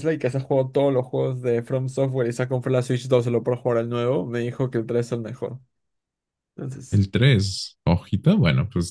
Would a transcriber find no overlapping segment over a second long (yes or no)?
yes